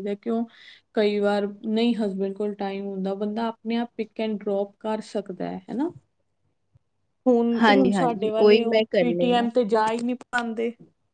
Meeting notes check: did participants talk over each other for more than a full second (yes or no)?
yes